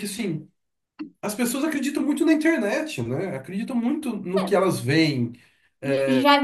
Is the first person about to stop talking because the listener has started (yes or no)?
yes